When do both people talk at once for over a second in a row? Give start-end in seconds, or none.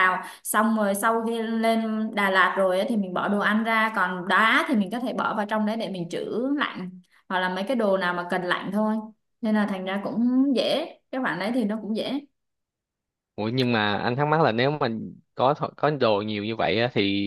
none